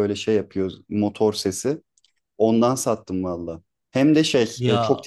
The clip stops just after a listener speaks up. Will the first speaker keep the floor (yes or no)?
yes